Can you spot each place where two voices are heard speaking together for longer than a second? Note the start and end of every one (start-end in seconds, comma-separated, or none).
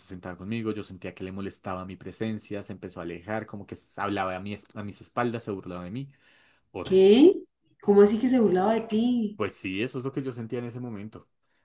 none